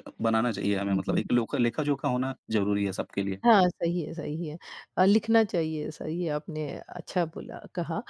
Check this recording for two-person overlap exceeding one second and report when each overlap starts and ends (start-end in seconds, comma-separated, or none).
none